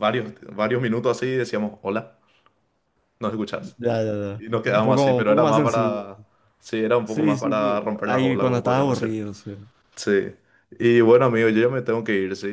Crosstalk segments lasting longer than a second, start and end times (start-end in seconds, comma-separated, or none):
4.4-6.0, 7.0-9.2